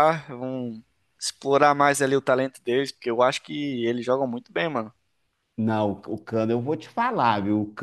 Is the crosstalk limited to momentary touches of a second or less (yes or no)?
yes